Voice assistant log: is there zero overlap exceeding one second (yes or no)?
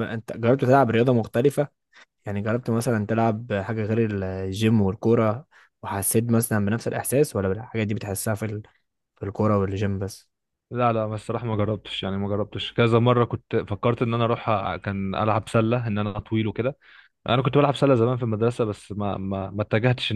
yes